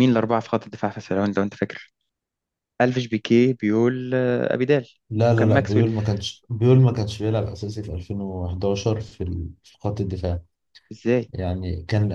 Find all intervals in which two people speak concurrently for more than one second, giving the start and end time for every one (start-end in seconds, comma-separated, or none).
none